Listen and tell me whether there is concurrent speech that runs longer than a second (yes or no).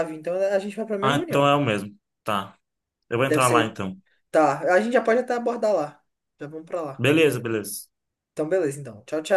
no